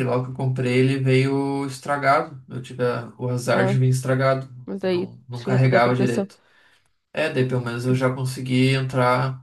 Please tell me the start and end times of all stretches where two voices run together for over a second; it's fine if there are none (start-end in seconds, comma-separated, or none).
4.7-6.3